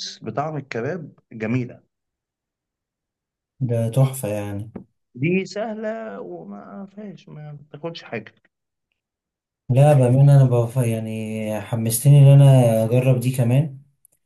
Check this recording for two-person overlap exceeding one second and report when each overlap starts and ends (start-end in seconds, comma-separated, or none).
none